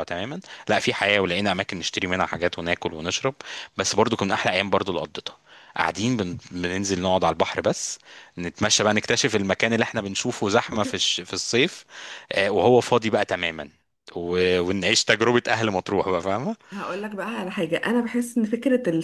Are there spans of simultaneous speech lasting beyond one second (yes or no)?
no